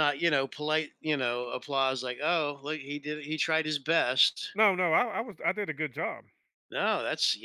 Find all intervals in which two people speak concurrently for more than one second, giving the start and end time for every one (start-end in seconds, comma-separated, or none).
none